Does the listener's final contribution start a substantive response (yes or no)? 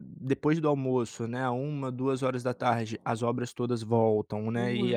no